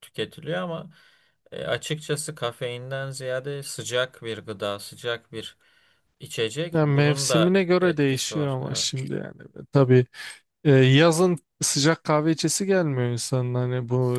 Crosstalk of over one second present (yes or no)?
yes